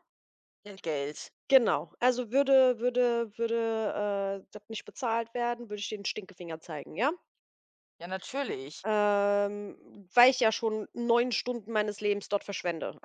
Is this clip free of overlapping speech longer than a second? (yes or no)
yes